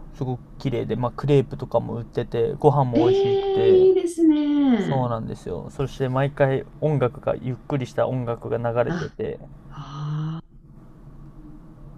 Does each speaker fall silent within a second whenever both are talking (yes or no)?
yes